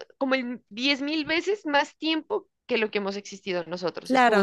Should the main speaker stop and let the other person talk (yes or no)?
yes